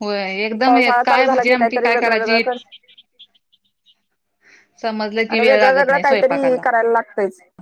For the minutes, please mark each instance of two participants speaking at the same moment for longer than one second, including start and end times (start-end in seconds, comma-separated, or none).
0.7-2.4, 5.3-6.6